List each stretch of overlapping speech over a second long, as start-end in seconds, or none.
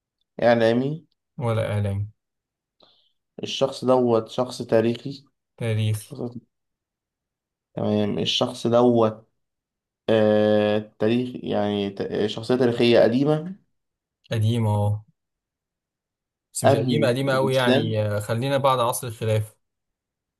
16.6-17.9